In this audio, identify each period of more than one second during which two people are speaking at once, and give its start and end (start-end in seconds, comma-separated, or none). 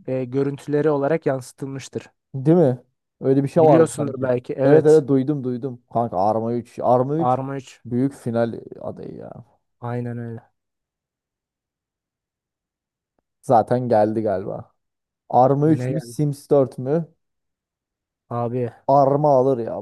3.6-5.0